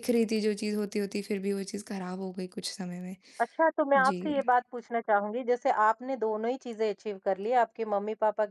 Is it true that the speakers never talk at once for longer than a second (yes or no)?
yes